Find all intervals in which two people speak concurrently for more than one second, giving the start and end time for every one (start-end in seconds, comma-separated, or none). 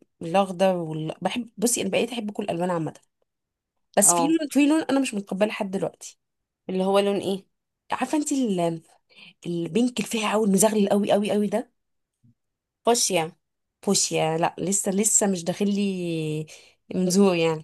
none